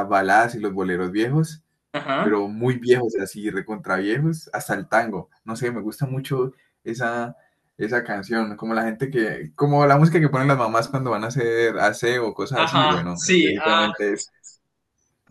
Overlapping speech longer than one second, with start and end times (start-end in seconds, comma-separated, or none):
12.5-13.9